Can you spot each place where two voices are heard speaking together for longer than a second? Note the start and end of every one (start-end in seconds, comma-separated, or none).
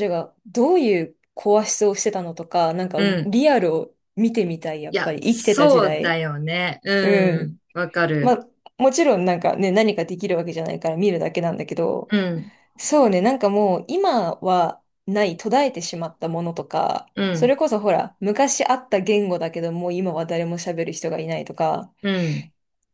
4.9-6.2